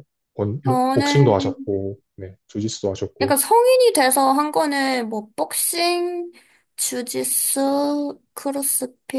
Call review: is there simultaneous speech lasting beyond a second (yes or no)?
no